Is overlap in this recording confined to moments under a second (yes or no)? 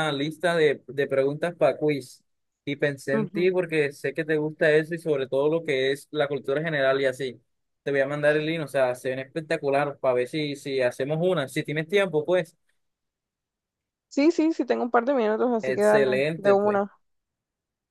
no